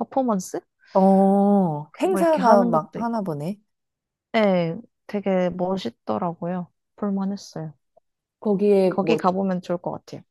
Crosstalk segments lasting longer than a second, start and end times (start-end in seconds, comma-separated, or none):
1.9-3.2